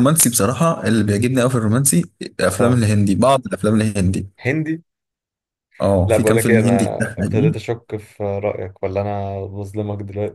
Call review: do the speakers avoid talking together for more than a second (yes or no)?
no